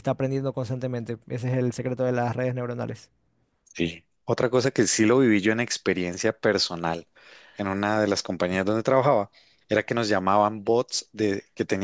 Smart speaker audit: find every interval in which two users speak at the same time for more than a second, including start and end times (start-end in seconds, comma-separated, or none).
none